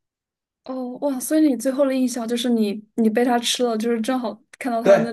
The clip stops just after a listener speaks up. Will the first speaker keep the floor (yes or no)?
no